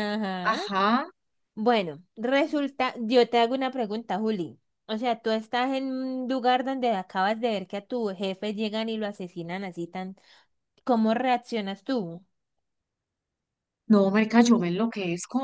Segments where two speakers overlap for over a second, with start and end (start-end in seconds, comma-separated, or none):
none